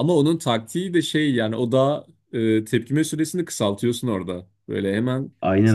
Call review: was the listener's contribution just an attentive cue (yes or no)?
yes